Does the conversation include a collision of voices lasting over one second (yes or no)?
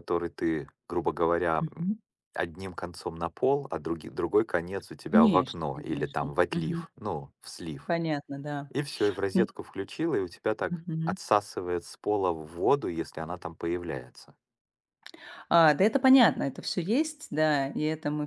yes